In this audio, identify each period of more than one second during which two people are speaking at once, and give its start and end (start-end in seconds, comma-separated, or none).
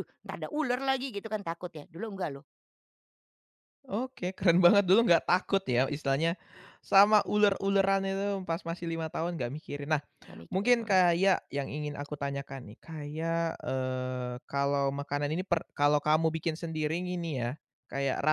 none